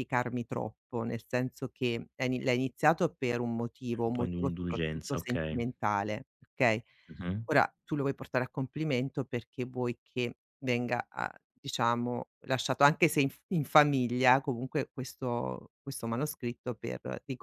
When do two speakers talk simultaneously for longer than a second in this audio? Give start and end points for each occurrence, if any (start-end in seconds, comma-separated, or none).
4.0-5.6